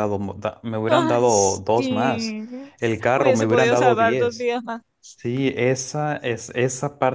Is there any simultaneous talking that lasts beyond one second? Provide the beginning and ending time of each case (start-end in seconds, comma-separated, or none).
0.9-2.4, 3.1-4.5